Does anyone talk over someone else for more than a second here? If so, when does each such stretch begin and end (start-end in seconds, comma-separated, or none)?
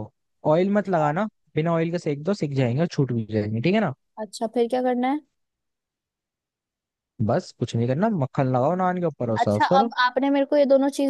none